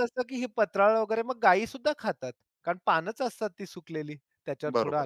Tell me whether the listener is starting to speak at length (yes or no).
no